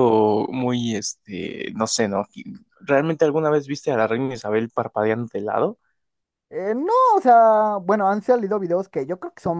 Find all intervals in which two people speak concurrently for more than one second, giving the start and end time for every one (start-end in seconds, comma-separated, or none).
none